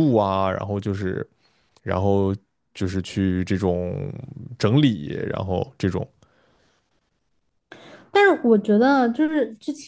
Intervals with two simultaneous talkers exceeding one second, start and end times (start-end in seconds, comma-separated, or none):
none